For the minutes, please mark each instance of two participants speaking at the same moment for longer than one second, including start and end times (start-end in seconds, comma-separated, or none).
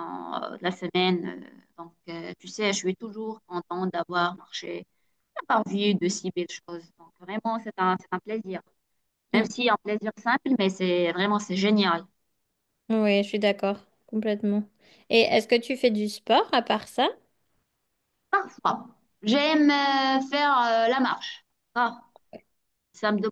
none